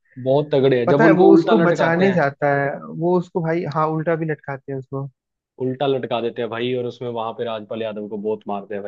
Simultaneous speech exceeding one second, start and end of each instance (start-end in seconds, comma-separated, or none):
0.9-2.3